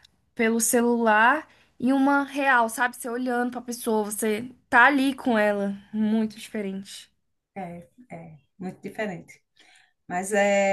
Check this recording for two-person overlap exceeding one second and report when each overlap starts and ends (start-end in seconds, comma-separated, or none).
none